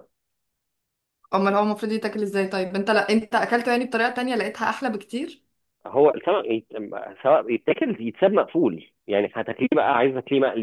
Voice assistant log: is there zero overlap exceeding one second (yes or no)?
yes